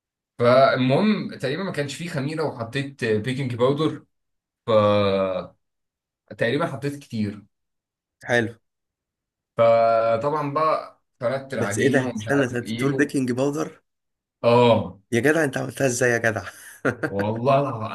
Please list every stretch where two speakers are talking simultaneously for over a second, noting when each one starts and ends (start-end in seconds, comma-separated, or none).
11.5-13.1